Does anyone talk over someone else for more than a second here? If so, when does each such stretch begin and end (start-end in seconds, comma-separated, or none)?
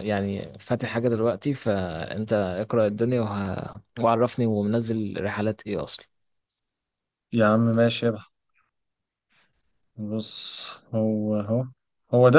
none